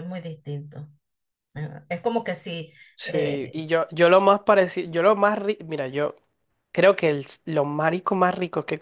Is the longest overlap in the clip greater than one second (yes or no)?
no